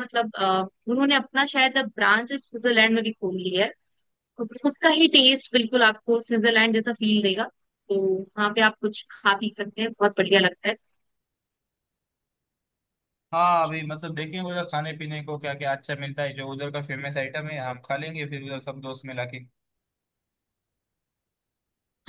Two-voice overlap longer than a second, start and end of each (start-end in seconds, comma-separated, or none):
none